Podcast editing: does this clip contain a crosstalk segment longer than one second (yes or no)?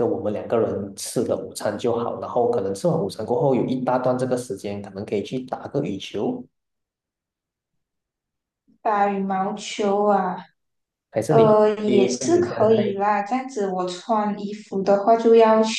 yes